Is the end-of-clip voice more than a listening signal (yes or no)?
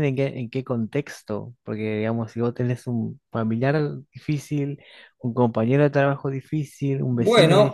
yes